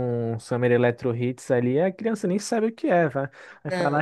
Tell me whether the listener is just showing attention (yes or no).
yes